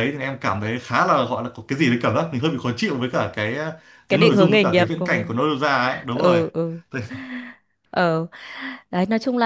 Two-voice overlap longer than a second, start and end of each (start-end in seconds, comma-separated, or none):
4.1-5.3